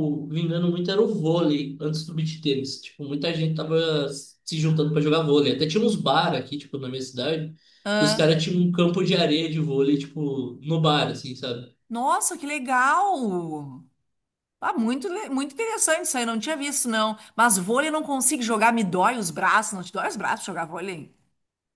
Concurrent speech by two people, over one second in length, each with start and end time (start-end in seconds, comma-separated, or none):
none